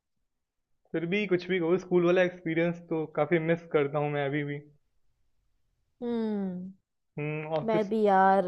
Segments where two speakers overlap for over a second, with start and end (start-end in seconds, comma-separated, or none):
none